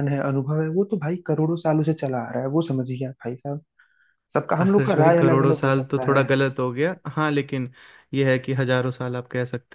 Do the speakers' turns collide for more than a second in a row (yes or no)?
yes